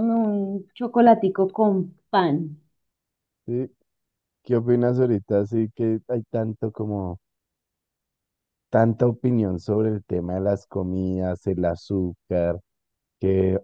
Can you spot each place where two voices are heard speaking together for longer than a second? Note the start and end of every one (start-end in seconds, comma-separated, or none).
none